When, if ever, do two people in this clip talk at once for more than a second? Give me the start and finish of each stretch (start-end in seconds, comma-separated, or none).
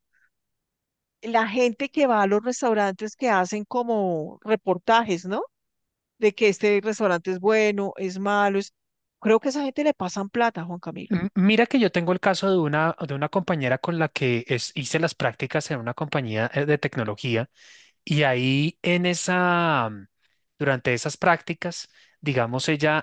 none